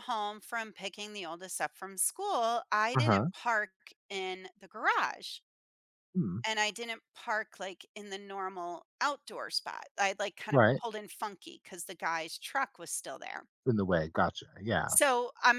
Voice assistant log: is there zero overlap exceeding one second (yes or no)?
yes